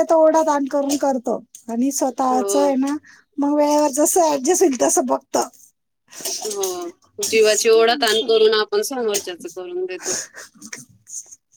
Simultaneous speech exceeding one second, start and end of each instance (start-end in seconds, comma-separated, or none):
none